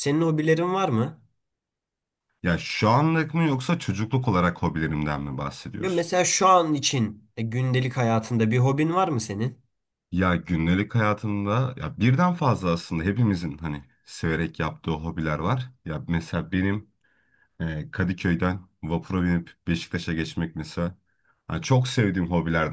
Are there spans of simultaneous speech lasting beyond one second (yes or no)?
no